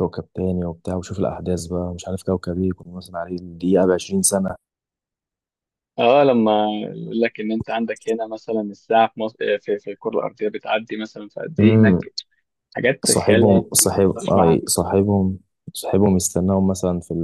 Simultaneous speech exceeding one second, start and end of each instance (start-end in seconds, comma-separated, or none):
13.0-14.7